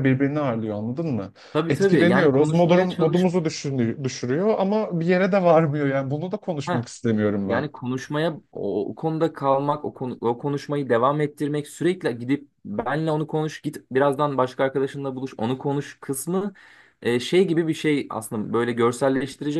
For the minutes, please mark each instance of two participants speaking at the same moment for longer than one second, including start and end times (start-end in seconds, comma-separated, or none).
1.7-3.3